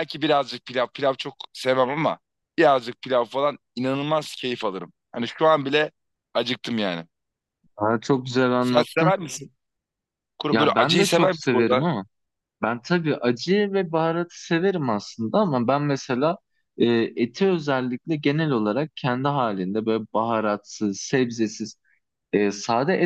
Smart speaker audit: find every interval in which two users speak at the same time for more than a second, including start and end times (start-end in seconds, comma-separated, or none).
10.5-11.9